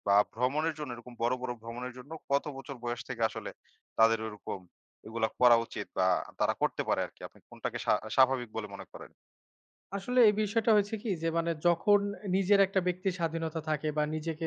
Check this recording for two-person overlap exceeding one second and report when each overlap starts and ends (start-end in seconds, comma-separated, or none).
none